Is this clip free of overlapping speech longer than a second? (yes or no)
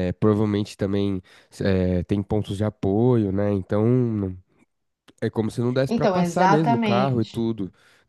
no